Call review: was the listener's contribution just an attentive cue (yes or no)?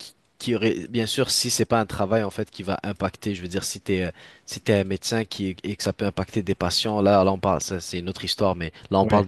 yes